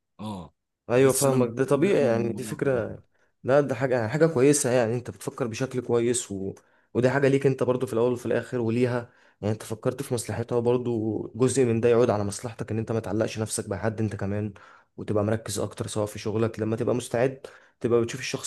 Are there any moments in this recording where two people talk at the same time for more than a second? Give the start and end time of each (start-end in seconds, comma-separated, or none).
1.0-2.6